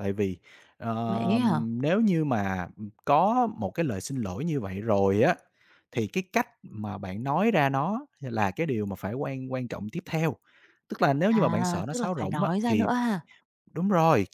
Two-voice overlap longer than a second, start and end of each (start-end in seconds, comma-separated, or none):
11.3-12.9